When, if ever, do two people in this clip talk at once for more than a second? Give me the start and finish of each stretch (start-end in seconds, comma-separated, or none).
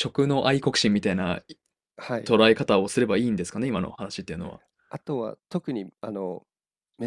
none